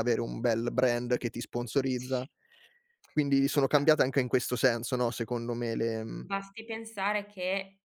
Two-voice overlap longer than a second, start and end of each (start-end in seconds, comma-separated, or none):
none